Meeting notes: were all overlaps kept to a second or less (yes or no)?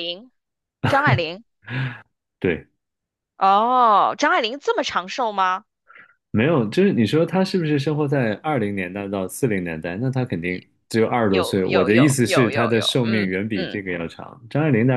no